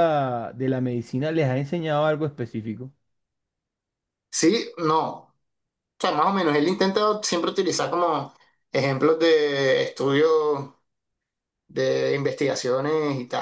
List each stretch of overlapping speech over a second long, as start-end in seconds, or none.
none